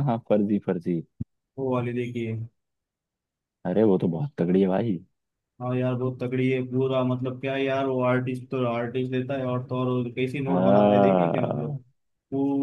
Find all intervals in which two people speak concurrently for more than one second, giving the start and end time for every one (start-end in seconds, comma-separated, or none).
10.5-11.7